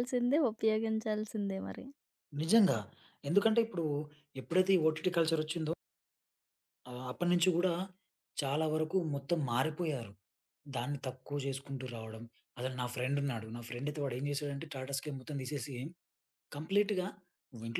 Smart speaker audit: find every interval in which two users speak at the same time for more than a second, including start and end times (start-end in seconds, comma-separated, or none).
none